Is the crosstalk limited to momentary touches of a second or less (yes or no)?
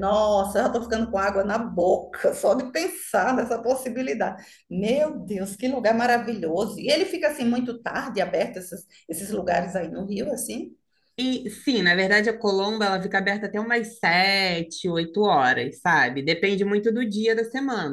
yes